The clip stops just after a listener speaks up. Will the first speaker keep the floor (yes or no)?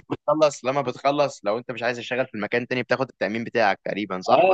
no